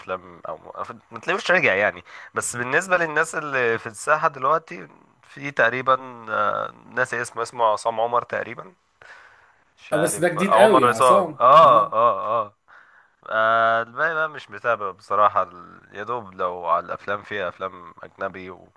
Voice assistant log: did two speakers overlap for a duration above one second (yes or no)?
yes